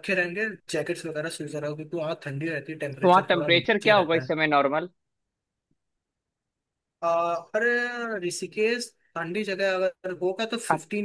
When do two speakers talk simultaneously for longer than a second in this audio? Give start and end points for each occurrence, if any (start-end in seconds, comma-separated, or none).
3.0-4.3